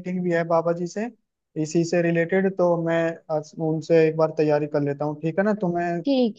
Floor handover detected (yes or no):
yes